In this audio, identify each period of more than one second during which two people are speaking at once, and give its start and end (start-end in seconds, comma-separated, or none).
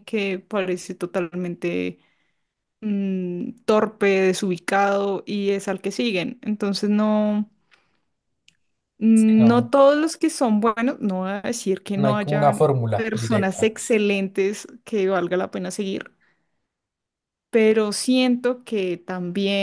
11.9-13.8